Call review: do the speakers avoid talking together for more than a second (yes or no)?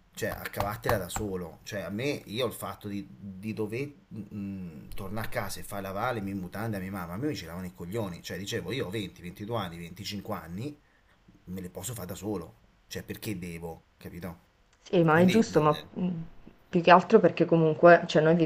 yes